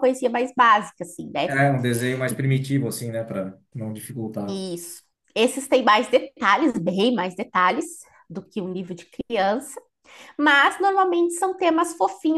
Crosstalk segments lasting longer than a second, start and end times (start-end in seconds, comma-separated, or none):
none